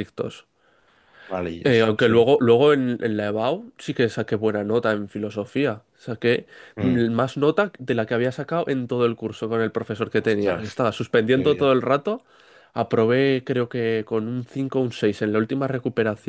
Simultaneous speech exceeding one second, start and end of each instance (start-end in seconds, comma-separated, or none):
none